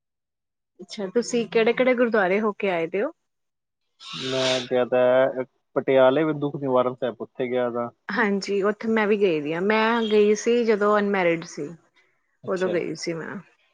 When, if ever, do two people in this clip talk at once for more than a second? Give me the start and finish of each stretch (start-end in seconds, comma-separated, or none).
none